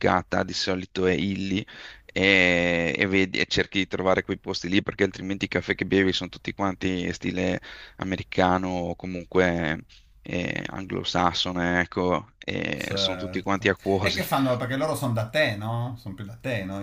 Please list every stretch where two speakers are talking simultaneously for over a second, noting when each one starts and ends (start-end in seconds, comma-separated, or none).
12.8-14.2